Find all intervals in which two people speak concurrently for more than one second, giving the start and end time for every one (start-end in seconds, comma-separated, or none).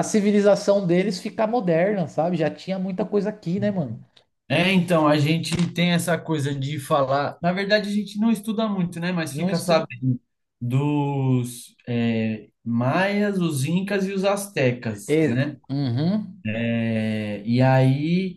none